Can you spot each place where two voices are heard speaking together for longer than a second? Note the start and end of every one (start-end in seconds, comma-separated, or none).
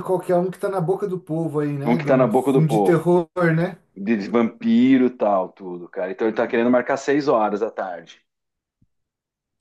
1.9-3.1